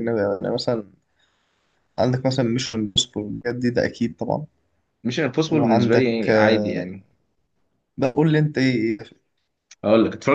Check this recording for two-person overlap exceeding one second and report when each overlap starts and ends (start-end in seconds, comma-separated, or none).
5.5-6.8